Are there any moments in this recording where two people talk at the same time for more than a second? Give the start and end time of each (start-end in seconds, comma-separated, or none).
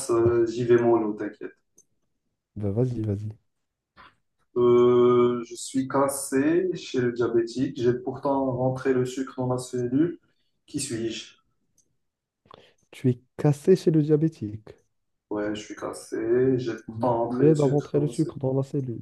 16.9-18.4